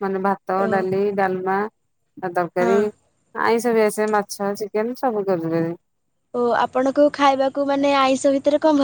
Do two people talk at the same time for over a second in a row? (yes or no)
no